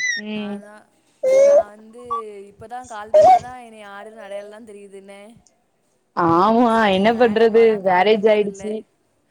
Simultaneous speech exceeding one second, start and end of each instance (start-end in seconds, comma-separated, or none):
7.1-8.6